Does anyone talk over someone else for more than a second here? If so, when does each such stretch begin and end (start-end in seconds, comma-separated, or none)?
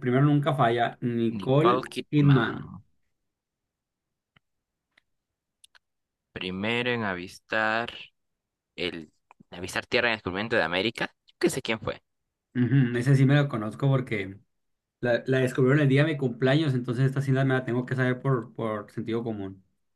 1.4-2.6